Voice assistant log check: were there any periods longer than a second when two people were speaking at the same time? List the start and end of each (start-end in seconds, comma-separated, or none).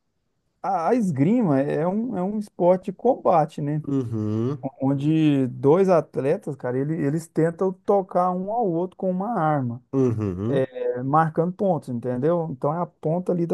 none